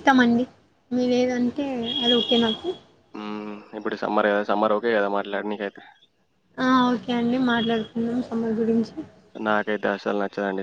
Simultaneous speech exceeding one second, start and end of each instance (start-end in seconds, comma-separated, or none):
none